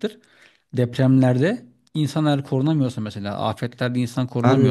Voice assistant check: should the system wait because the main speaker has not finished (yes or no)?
no